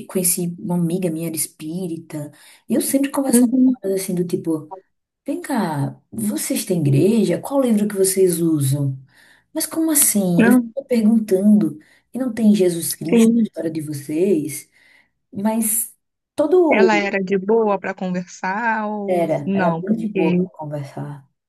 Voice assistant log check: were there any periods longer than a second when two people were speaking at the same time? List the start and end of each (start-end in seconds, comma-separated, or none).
19.1-20.4